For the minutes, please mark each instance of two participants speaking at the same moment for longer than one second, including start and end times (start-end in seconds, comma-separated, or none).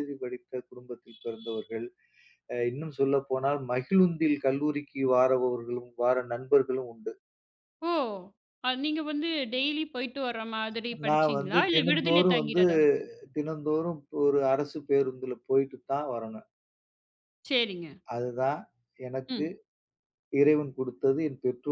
11.1-12.6